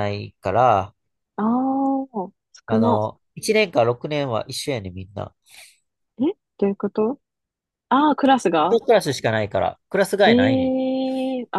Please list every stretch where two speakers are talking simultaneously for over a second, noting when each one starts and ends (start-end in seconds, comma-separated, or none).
none